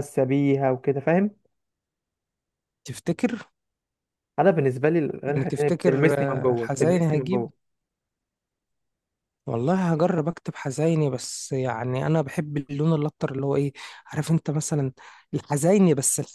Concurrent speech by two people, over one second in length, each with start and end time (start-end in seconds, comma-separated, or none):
5.3-7.4